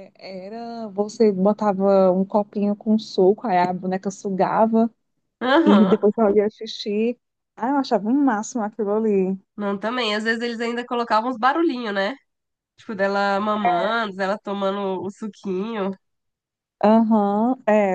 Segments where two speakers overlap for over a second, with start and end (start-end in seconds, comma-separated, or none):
none